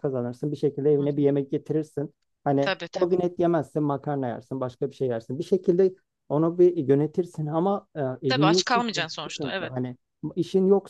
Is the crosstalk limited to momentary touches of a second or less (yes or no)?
no